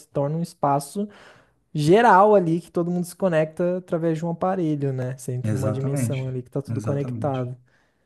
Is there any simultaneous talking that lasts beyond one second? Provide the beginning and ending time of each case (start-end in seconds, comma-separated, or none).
5.4-7.5